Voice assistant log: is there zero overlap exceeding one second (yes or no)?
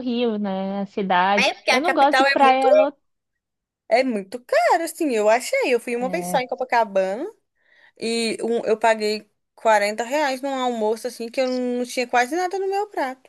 no